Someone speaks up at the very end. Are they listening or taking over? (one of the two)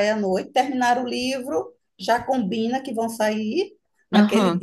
listening